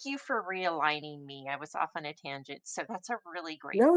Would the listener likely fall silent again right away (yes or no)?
no